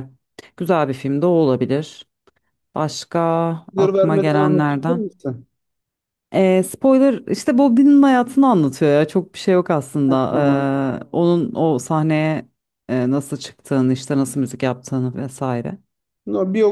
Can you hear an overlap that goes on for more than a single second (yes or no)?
yes